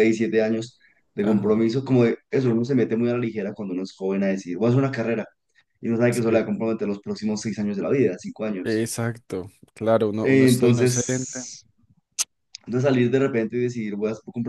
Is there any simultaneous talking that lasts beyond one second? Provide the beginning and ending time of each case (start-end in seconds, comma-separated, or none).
10.2-11.4